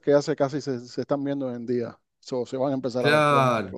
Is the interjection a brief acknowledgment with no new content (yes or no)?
no